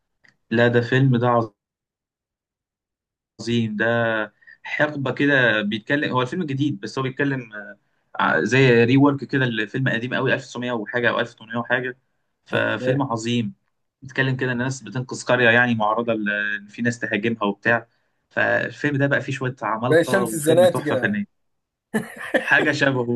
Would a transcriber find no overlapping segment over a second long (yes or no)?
no